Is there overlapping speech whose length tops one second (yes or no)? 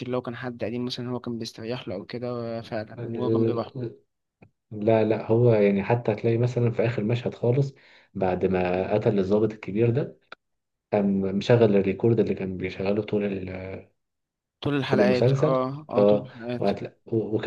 yes